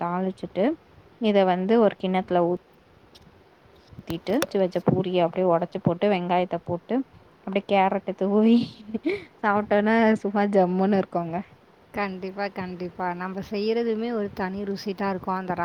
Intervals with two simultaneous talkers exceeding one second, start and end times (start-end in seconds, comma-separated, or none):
none